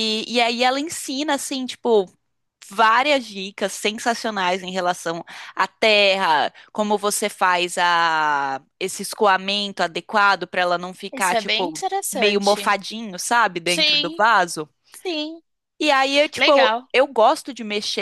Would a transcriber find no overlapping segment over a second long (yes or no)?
no